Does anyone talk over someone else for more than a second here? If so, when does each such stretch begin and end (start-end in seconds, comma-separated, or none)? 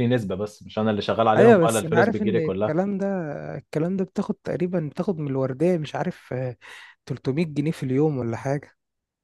1.4-2.8